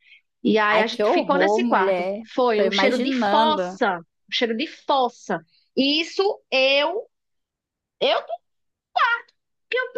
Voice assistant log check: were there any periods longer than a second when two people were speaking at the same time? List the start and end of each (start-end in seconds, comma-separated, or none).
0.7-3.8